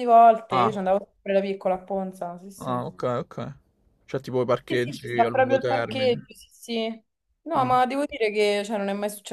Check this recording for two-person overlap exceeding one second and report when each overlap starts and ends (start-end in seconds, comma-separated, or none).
4.7-6.3